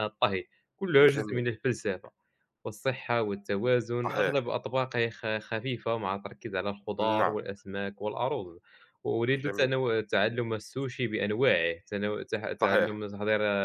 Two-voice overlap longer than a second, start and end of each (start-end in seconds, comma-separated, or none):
none